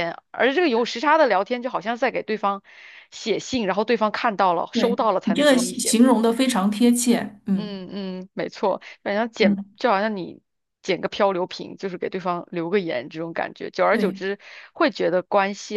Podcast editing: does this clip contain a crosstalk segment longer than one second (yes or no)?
yes